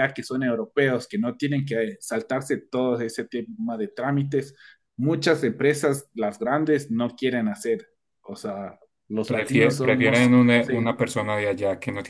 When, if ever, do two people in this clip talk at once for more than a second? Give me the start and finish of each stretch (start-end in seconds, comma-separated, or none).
9.2-10.9